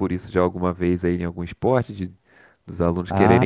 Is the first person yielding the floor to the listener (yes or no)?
yes